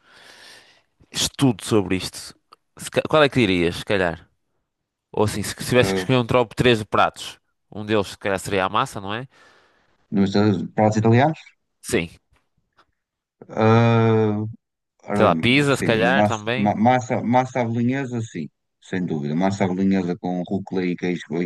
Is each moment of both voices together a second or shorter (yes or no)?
no